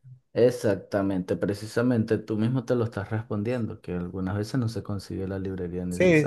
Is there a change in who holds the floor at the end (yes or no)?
yes